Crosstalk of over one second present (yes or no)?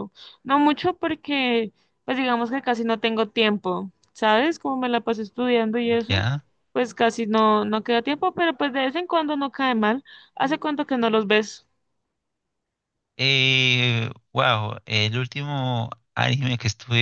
no